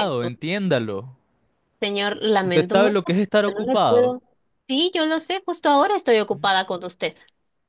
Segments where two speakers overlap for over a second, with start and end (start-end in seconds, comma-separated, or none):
2.4-4.2